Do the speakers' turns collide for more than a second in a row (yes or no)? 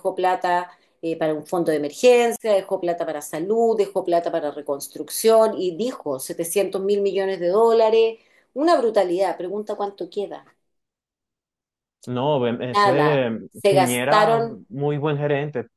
yes